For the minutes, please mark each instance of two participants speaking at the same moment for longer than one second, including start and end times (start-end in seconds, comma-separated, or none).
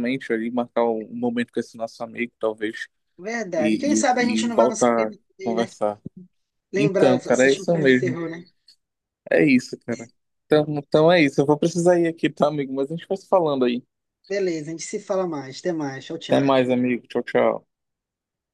3.6-5.7, 6.8-8.2